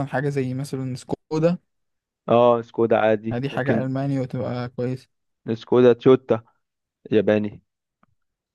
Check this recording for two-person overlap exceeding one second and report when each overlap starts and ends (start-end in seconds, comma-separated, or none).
none